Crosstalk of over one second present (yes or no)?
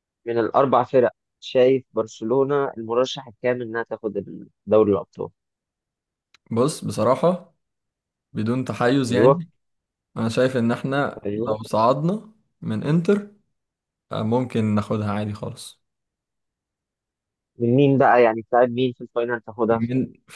no